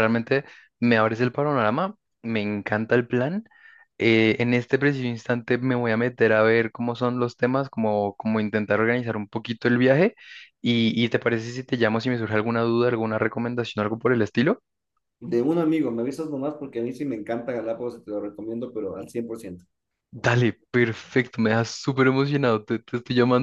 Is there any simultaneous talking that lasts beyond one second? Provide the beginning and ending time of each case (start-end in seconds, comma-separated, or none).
none